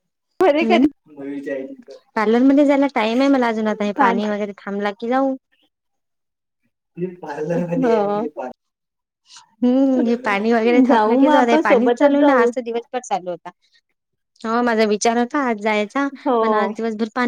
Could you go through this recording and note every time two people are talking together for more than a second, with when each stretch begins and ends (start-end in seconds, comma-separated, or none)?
10.9-12.5